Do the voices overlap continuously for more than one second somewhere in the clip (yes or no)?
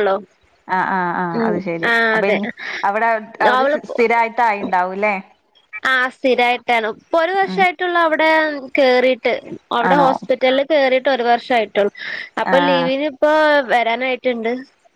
no